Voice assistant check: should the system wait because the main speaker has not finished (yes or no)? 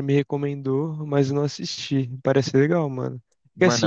yes